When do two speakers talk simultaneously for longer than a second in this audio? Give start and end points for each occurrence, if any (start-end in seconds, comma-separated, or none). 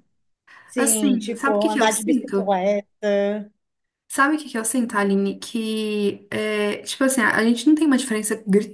0.8-2.6